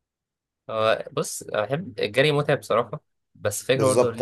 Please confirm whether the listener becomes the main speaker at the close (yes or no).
no